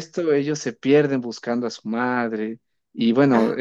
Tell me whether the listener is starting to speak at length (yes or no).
no